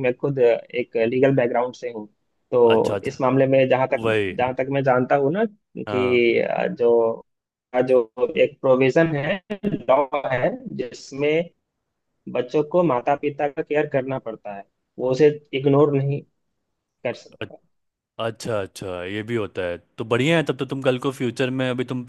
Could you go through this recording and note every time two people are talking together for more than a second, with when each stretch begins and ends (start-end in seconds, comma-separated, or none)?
none